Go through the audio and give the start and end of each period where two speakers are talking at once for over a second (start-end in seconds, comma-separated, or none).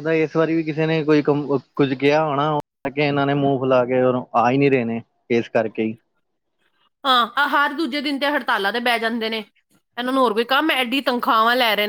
none